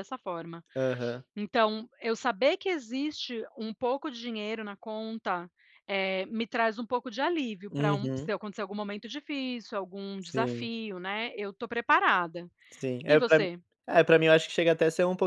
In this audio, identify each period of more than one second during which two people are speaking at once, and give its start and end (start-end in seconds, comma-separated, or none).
none